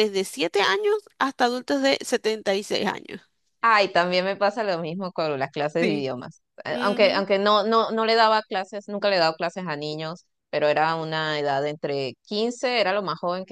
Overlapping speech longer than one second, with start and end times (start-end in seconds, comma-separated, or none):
none